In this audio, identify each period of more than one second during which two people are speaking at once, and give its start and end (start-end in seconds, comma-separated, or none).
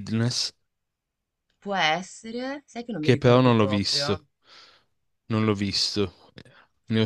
3.0-4.2